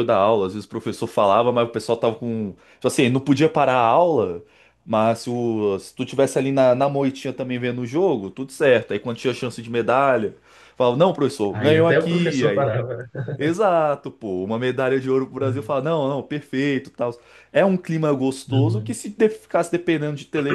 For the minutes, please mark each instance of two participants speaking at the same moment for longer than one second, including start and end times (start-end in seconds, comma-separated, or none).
11.5-12.7